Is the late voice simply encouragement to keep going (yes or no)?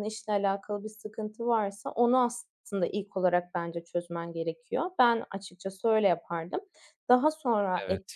yes